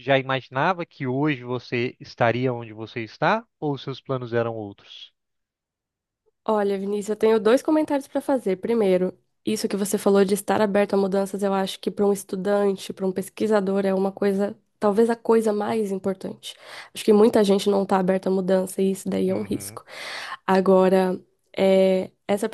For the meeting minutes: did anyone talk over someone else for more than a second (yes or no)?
no